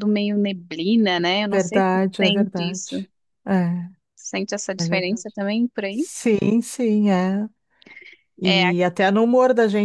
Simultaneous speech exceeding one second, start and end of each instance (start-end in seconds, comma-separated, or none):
1.5-2.9